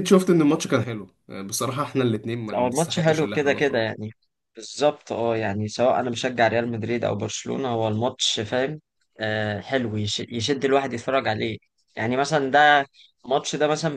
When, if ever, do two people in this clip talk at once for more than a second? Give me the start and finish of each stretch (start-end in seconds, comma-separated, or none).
2.5-3.9